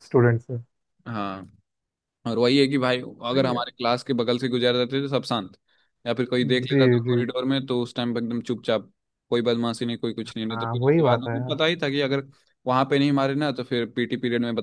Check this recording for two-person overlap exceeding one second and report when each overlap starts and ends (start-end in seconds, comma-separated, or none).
10.3-11.6